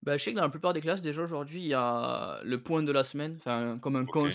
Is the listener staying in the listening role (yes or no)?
yes